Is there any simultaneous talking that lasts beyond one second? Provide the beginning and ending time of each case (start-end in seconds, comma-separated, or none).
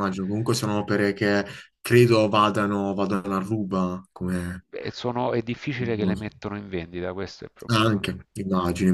none